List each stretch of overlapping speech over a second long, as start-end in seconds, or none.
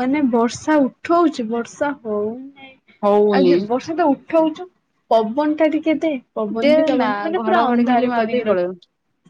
6.7-8.7